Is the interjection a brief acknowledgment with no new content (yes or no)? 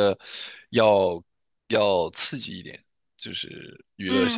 no